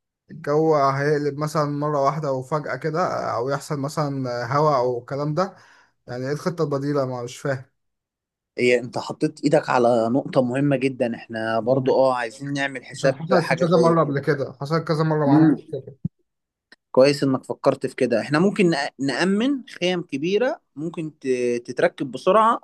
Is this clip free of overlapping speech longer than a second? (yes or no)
no